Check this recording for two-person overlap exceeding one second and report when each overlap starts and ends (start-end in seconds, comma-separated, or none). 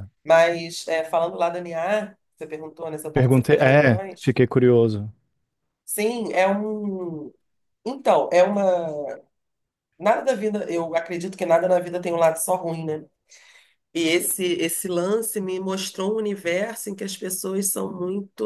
3.1-4.3